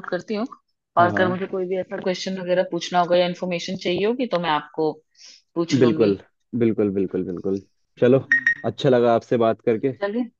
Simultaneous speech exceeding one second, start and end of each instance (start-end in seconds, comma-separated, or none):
none